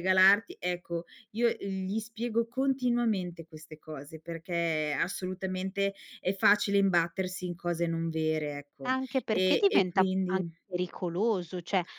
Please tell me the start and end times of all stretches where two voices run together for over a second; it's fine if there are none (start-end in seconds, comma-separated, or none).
8.8-10.5